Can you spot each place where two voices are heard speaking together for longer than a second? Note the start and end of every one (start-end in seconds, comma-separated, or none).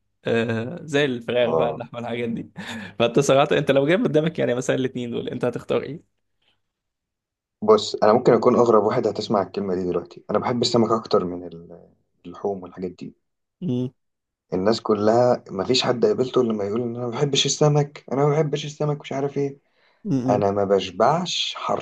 none